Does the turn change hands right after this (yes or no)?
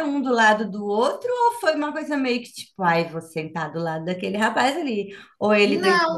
yes